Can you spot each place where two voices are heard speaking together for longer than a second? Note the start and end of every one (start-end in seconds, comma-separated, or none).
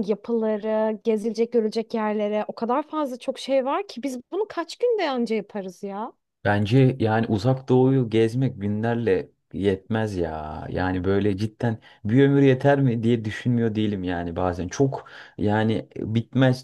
none